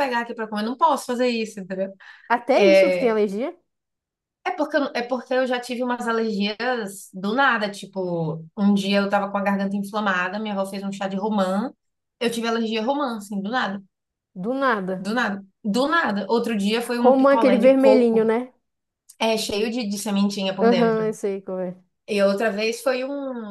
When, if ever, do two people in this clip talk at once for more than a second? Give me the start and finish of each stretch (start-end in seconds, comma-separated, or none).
17.0-18.3